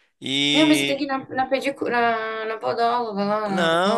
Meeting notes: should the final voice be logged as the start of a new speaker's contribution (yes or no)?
yes